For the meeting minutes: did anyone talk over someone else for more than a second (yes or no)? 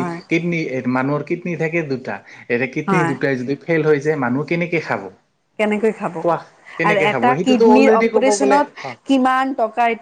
yes